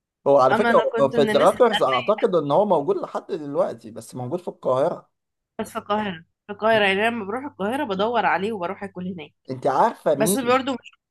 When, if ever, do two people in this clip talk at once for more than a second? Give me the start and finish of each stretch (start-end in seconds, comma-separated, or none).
0.5-2.3